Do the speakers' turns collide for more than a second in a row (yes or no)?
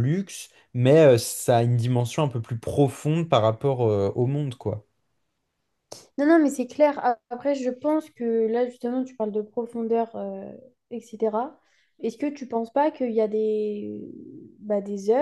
no